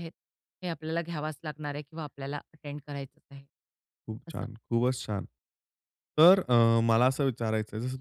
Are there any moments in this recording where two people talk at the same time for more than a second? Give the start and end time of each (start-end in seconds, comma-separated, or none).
none